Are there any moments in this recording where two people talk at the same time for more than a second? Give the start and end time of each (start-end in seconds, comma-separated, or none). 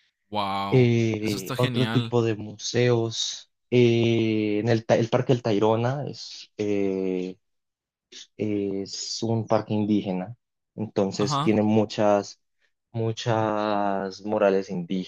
0.7-2.1